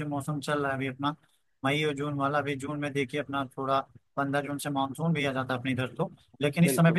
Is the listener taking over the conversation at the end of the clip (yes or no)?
no